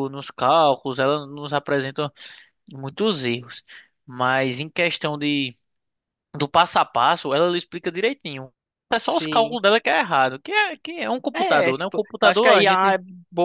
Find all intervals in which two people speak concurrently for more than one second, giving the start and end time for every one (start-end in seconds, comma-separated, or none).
11.3-12.9